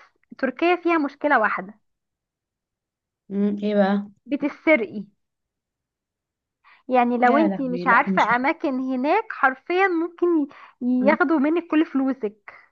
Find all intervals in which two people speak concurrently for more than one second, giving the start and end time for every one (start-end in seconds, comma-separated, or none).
7.2-8.5